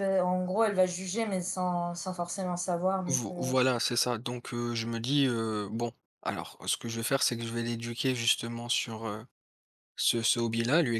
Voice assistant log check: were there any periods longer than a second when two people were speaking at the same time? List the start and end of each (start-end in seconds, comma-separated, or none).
none